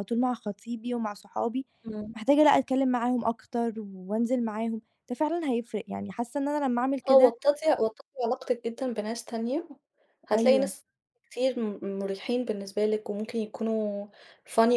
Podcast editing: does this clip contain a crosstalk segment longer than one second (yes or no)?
no